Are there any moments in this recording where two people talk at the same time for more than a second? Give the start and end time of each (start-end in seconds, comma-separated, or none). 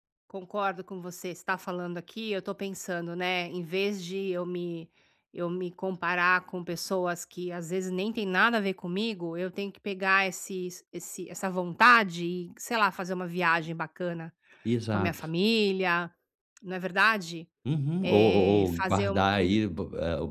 18.0-19.3